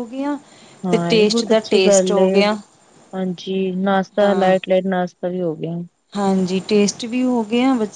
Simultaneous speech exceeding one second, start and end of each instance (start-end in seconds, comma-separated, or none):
0.9-2.5